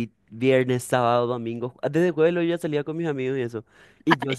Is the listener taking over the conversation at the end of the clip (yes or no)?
no